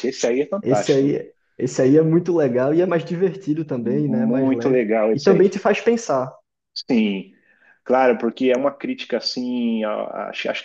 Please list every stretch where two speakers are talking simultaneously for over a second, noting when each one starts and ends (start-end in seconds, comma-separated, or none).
3.8-5.6